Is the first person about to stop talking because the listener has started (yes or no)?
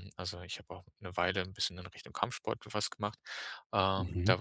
no